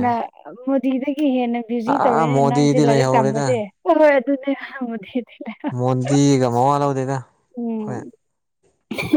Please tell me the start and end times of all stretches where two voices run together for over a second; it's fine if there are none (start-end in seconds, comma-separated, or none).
1.9-3.5